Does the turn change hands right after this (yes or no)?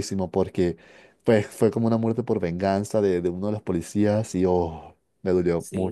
yes